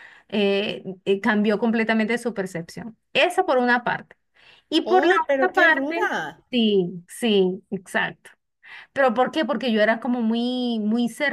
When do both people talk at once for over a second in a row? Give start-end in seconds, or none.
4.8-6.1